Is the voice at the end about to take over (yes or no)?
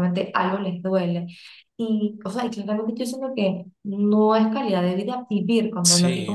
yes